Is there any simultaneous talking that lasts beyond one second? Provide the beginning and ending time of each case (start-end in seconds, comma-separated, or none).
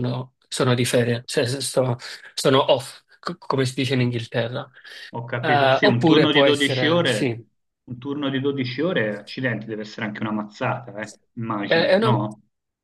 5.4-7.4